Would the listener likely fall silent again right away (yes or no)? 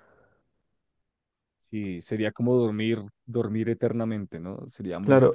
no